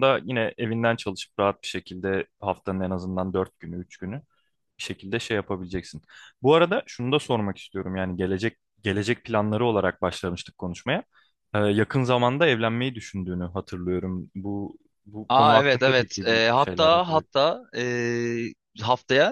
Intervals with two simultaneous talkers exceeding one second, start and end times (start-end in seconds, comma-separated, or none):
15.3-17.3